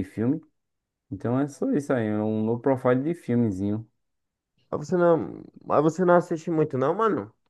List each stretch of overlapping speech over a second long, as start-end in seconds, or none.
none